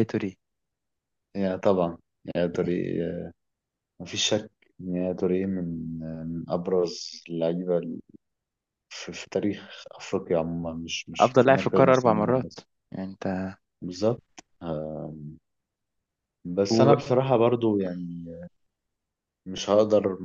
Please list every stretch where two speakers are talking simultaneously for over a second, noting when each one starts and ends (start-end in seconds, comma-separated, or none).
11.2-12.6